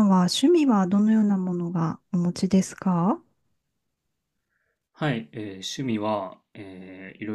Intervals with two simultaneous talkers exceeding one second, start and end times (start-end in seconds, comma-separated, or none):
none